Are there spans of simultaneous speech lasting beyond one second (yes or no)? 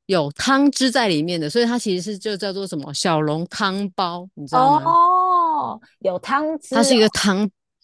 no